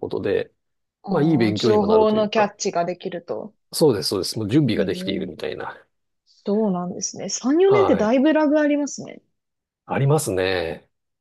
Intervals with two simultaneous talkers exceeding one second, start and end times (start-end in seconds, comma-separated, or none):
1.1-2.5